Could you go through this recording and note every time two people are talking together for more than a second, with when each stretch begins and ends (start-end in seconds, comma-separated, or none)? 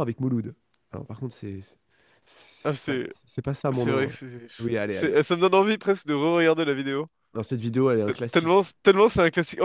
none